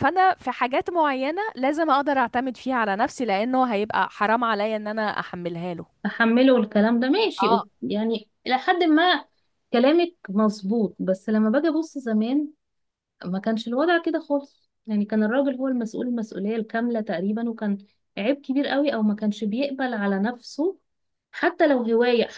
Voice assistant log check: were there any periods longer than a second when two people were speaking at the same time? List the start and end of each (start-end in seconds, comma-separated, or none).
none